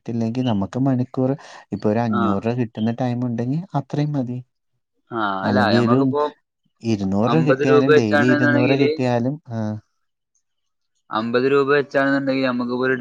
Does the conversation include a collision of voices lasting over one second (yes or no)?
yes